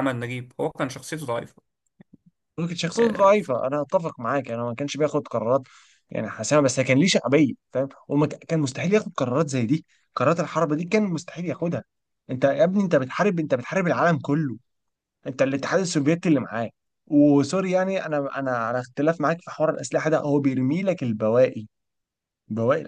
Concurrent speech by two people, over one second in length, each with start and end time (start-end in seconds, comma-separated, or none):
none